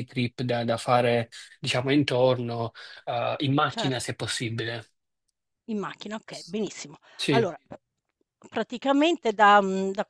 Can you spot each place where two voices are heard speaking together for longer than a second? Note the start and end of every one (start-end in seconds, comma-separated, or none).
none